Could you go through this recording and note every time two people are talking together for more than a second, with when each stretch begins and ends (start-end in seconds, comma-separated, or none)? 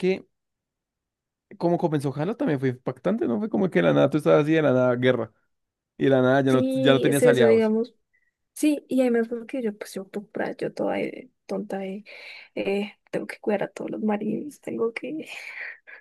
6.5-7.7